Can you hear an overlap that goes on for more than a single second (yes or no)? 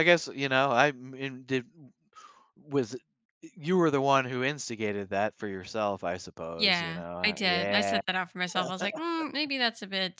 yes